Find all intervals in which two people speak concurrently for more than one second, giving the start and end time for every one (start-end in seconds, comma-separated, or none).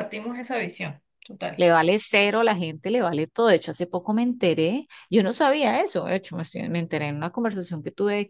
none